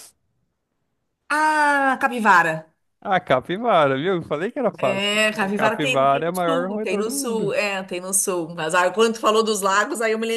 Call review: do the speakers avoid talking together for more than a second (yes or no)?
no